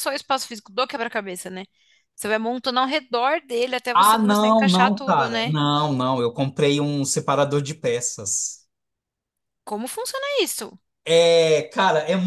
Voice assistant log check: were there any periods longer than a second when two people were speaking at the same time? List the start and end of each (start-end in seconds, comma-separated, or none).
3.9-5.5